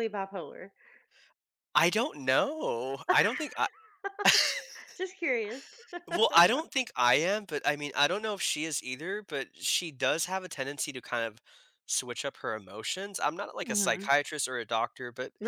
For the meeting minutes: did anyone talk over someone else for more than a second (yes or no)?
no